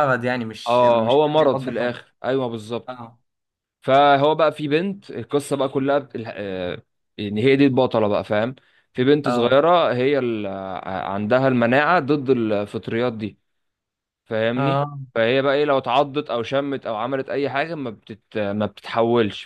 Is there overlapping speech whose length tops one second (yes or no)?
yes